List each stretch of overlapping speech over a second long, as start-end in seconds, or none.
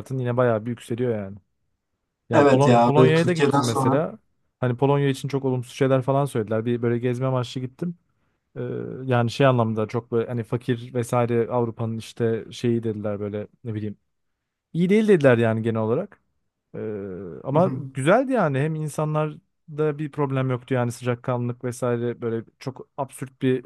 2.3-4.0